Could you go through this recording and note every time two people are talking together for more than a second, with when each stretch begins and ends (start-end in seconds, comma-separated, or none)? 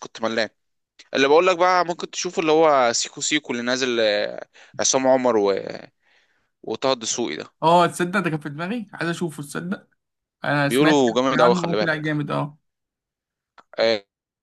10.6-12.1